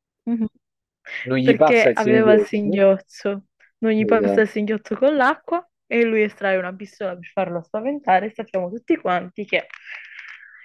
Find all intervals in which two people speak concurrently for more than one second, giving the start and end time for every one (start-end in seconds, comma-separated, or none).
1.4-2.9